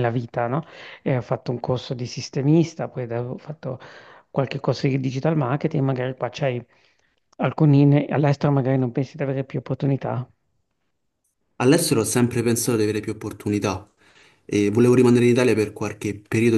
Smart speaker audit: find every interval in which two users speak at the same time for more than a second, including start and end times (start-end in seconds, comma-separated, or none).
none